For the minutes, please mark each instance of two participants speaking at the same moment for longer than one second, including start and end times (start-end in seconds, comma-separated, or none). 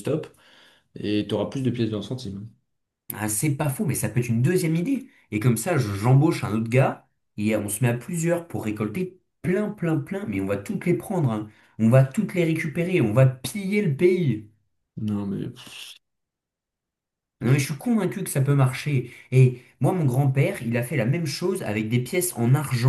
none